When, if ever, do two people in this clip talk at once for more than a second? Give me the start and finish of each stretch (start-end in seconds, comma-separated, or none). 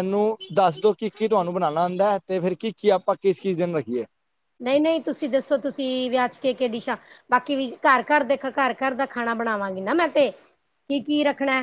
none